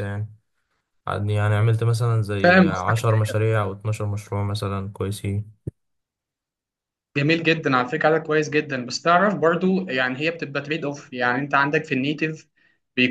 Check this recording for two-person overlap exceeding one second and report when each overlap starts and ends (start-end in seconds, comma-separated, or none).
none